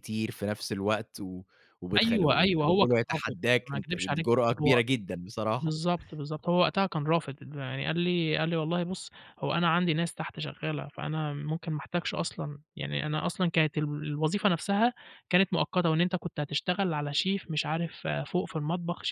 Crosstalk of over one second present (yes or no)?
yes